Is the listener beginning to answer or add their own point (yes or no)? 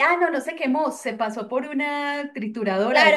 yes